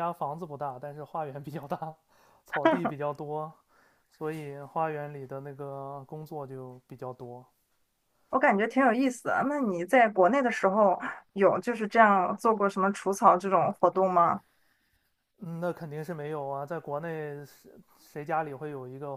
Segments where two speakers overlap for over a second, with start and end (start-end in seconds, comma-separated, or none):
none